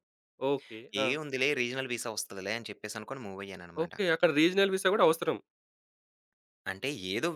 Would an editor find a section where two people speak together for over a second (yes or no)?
no